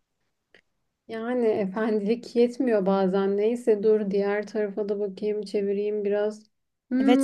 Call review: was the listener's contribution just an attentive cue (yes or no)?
no